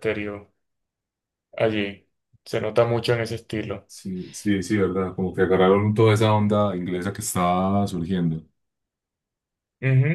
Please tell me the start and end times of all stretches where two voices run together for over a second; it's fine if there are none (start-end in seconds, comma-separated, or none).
none